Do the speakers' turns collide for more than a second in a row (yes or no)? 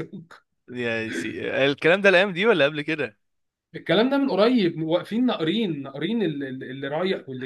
no